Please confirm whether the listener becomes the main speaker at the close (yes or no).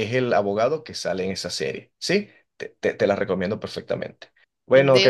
no